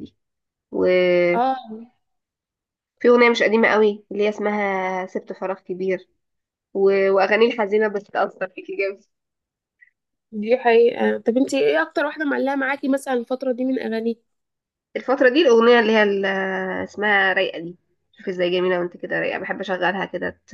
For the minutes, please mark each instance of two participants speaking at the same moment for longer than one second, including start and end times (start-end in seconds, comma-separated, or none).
none